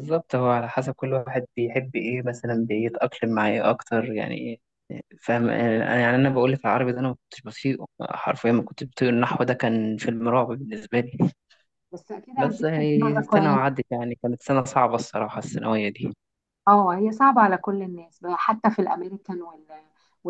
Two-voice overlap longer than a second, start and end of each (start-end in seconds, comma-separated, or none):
12.4-13.6